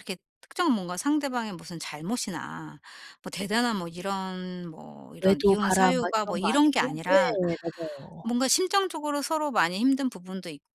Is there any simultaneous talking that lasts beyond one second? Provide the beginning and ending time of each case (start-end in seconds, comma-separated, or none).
5.2-7.3